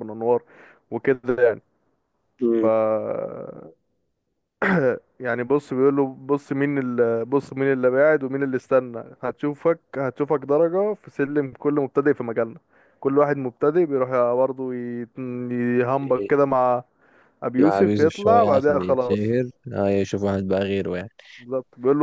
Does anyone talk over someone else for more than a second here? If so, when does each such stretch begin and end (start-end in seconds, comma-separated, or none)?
17.6-19.4